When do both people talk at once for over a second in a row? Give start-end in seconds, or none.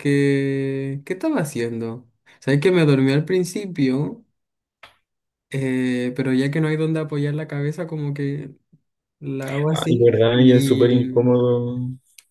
9.7-11.3